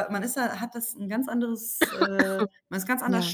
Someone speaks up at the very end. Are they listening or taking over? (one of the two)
listening